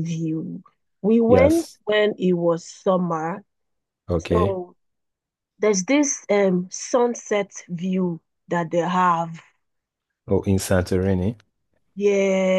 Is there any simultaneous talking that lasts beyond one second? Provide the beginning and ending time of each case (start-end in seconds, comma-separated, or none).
none